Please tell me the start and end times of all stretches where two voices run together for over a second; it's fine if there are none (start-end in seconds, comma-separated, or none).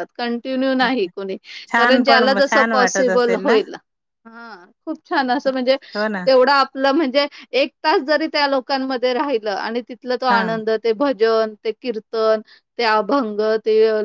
1.8-3.6